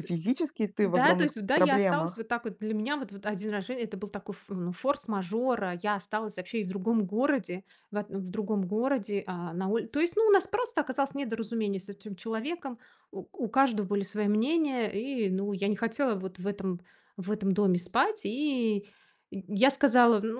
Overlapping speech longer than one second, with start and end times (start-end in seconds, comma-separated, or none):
0.8-2.2